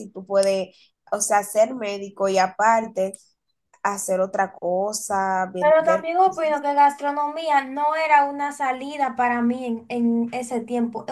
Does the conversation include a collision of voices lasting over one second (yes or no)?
no